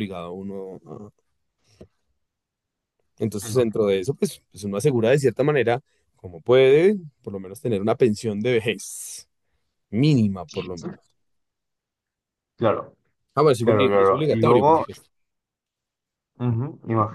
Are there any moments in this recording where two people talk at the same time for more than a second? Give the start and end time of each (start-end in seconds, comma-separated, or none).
13.6-14.8